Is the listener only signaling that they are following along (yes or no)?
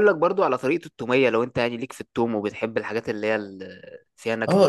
no